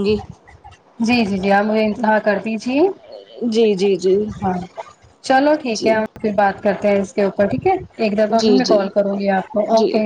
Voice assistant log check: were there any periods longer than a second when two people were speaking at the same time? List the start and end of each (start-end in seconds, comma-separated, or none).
none